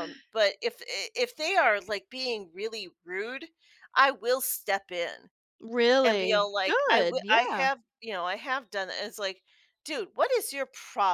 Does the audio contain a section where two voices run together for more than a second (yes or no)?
yes